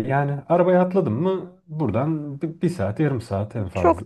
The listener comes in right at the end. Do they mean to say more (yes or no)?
yes